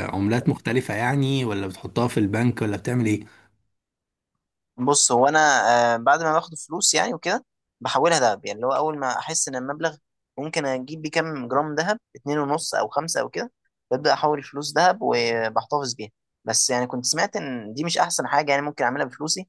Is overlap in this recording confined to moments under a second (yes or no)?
yes